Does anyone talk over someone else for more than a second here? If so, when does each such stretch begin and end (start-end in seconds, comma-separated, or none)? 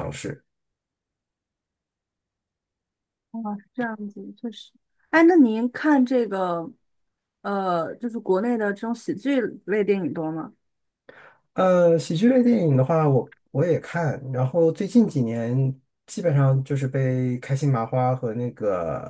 none